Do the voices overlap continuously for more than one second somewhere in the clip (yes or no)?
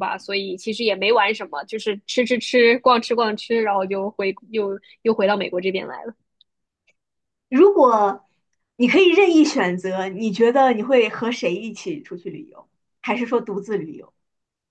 no